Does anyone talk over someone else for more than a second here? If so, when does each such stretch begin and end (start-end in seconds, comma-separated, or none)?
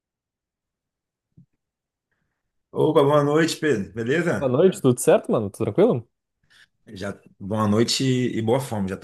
none